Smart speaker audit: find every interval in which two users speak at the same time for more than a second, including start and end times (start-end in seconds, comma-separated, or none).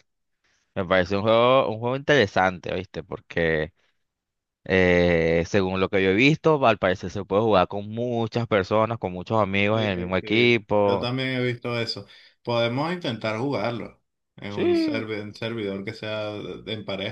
9.7-11.1